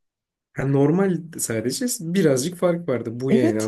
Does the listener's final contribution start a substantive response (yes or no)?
yes